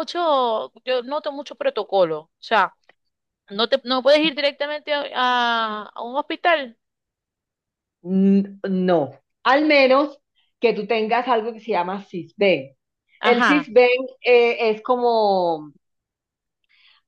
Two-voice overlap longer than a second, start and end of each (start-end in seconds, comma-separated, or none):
none